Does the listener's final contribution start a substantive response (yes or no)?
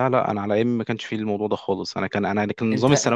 no